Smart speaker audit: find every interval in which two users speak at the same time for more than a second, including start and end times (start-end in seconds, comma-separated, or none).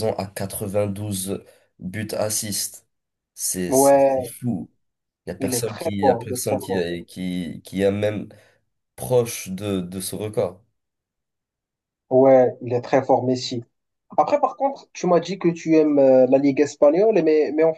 5.4-6.8